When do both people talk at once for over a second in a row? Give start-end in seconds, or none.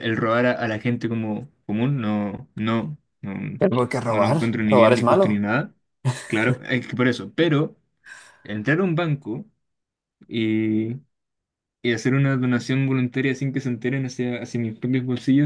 4.1-5.4